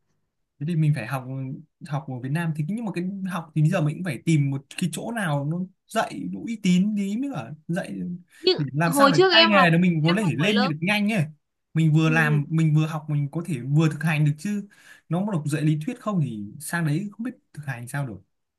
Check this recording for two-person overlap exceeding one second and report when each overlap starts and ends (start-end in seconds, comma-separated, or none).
8.6-10.7